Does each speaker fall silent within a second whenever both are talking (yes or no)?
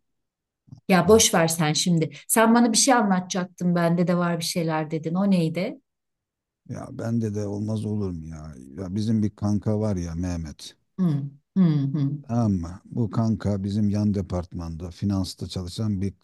yes